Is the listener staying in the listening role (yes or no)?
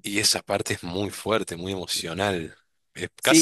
no